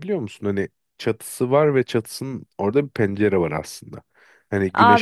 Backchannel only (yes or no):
no